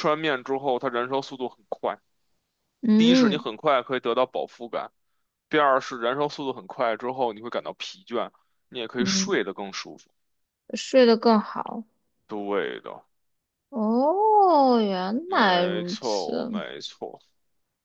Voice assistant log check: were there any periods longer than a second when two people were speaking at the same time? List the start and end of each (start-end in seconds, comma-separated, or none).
15.3-16.6